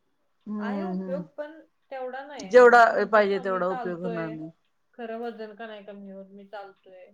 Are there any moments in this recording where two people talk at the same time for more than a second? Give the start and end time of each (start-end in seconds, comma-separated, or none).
2.5-4.3